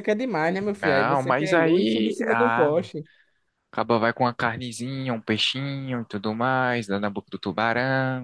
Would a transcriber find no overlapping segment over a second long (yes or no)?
no